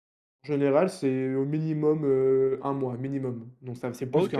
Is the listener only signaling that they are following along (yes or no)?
no